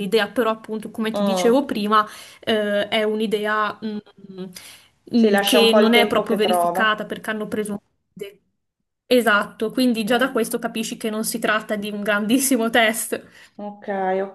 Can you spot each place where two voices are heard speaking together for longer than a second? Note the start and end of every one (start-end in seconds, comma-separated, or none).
5.2-7.0